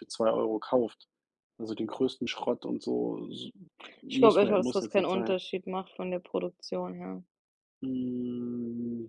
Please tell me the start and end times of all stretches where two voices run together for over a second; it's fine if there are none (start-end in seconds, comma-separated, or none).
4.1-5.4